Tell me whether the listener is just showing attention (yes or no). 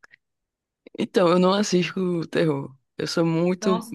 yes